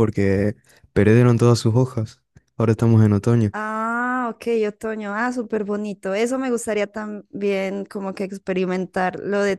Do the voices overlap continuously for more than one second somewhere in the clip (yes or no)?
no